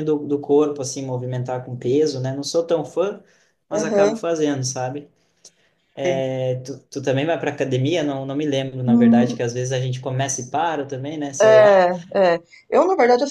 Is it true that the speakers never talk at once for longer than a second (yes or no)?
yes